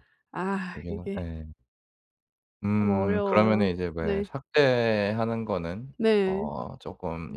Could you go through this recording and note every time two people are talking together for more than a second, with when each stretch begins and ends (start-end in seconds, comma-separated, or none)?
2.8-4.3